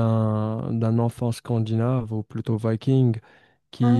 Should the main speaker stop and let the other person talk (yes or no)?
no